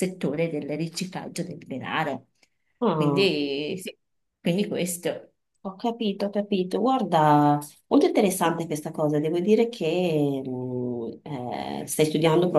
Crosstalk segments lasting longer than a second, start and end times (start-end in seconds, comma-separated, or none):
none